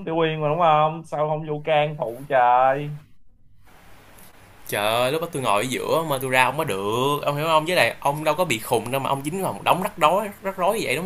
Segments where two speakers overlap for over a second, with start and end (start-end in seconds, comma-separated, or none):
none